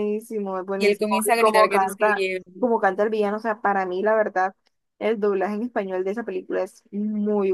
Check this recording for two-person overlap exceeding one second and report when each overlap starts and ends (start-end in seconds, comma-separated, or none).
0.8-2.4